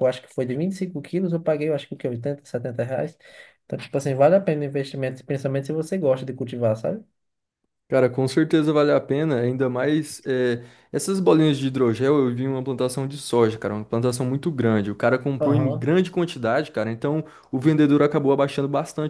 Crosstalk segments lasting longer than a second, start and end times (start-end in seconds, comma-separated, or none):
none